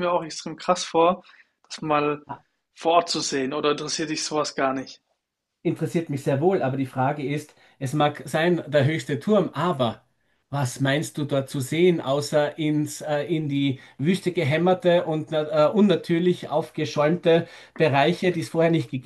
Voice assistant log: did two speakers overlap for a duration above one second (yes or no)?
no